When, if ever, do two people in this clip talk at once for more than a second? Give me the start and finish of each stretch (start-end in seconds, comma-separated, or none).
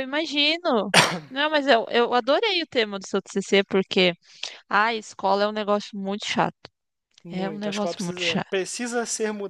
7.3-8.5